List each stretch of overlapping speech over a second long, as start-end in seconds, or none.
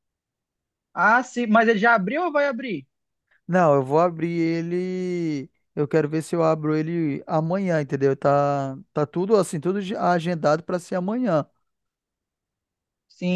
none